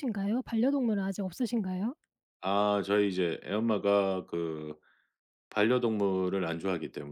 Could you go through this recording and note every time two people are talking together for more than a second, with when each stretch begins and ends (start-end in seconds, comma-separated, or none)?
none